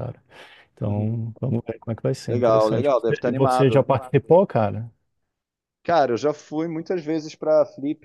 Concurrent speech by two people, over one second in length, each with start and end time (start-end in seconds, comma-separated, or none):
2.3-3.8